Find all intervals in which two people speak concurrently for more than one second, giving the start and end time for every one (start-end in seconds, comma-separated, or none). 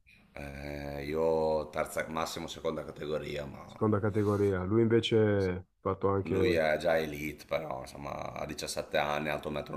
none